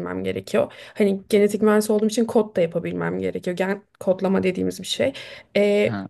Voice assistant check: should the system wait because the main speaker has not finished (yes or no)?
yes